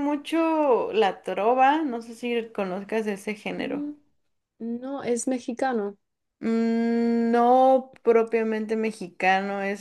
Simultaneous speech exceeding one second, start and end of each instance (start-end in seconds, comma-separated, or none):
none